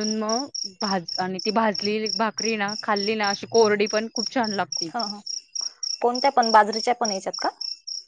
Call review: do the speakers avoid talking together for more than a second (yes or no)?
yes